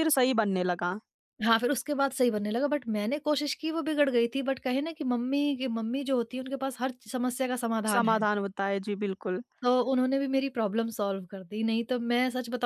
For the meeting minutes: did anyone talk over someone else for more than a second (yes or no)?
no